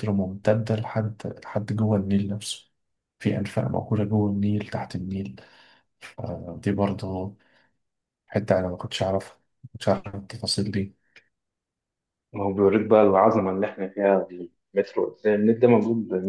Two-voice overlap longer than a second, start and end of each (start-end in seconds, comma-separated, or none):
none